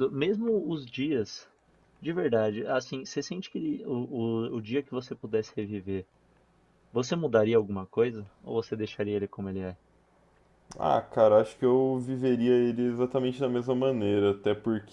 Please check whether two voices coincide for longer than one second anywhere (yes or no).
no